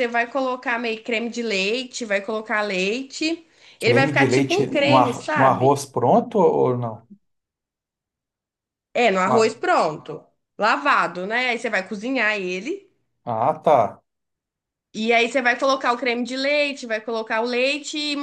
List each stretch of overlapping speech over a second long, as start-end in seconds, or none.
3.8-5.8